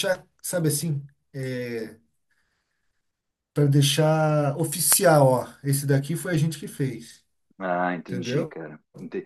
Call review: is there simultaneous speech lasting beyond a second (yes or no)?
no